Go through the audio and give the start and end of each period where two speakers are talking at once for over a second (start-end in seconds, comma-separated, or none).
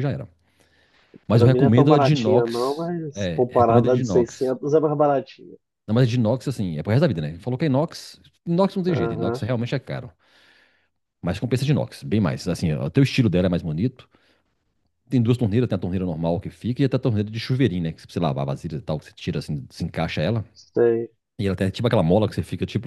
1.3-4.5